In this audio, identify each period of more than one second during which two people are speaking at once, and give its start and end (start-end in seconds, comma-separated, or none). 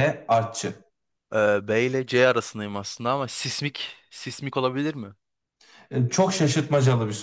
none